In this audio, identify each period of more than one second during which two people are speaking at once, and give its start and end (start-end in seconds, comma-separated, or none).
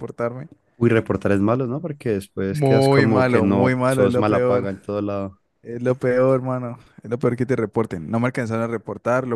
2.5-4.7